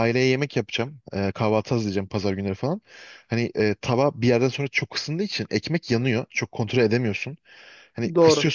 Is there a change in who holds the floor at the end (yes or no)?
no